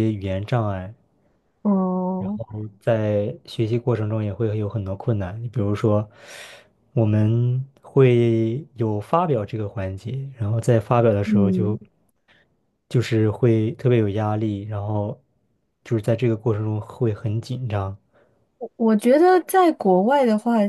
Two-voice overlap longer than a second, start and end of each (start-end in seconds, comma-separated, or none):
none